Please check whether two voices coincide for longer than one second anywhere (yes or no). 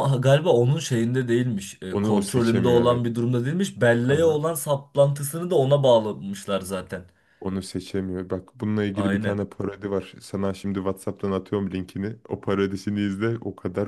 yes